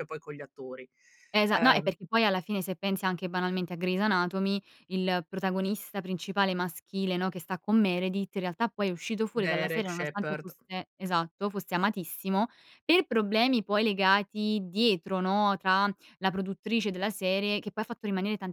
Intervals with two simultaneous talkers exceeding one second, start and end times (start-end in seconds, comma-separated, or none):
9.3-10.5